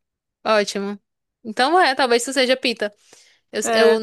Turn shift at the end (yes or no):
no